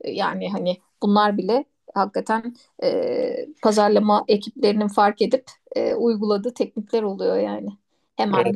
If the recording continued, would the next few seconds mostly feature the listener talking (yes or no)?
no